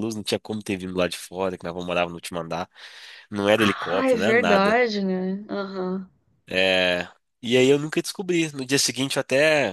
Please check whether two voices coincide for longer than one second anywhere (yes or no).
yes